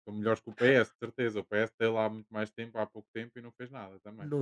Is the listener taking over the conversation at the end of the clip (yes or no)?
yes